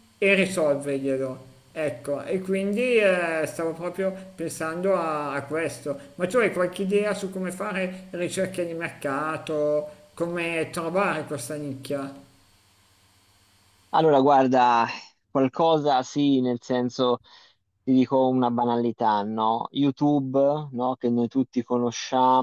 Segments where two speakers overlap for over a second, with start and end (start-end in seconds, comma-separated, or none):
none